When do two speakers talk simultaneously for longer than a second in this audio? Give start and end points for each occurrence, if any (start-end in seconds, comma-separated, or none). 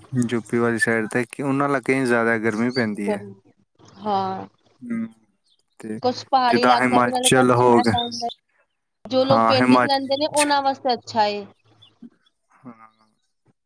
6.5-7.9